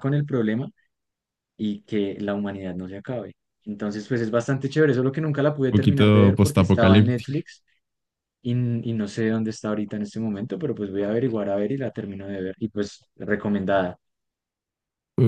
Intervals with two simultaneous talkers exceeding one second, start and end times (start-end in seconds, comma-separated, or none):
5.7-7.4